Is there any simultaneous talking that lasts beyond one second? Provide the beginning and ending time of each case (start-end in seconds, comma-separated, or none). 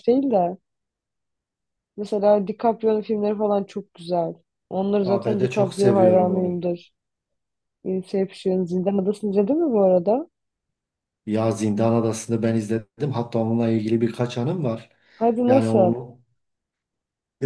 5.0-6.5